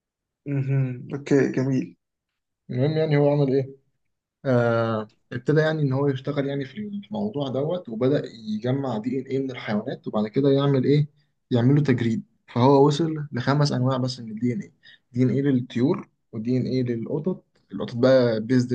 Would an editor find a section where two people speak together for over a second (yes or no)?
no